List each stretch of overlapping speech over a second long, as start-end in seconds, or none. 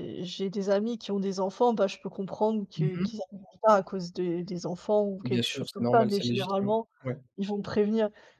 5.2-6.9